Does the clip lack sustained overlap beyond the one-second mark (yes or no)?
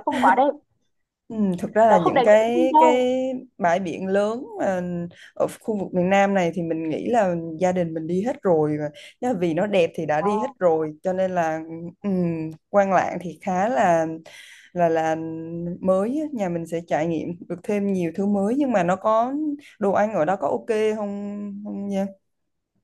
no